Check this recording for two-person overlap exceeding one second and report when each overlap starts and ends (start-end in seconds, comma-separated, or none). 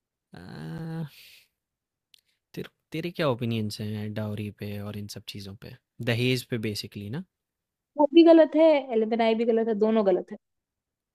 none